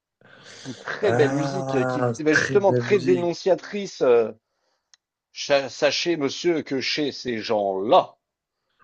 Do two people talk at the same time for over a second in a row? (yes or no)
yes